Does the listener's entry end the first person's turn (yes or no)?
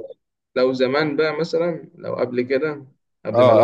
yes